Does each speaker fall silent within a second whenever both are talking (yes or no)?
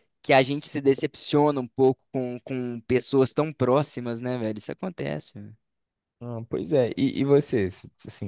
yes